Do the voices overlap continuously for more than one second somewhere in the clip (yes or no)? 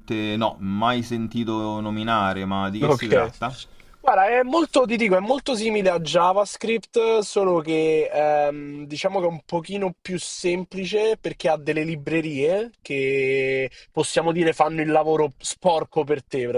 no